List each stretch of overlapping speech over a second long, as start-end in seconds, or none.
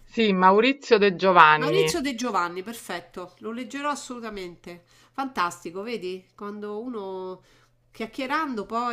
none